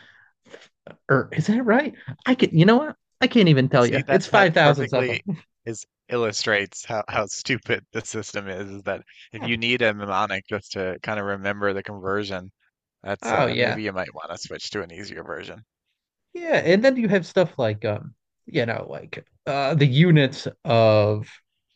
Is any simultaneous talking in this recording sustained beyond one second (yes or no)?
yes